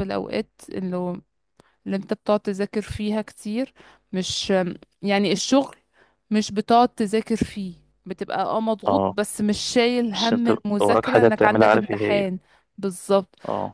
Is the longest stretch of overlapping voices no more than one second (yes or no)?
no